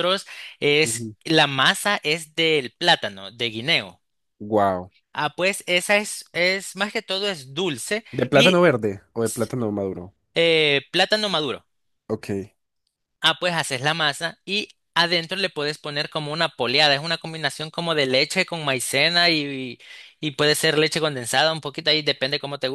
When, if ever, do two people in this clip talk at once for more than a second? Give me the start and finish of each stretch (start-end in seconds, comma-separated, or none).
none